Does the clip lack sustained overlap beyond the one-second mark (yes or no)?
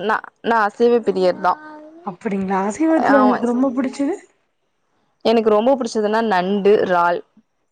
yes